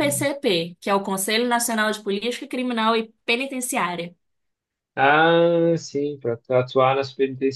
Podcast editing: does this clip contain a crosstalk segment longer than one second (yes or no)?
no